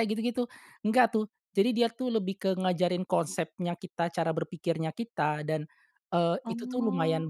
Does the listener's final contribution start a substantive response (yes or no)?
no